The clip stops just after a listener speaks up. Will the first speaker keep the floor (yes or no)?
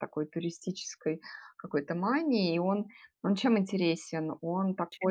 yes